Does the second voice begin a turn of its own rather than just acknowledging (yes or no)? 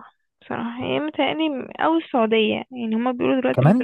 no